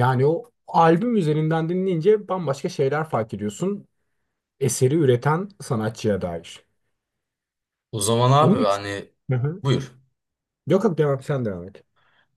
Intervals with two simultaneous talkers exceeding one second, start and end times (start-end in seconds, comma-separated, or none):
none